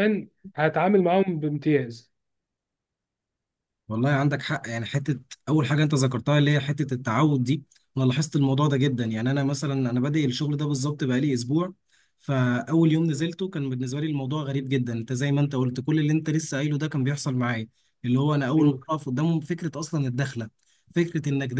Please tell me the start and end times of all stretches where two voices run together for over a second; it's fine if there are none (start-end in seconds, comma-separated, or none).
none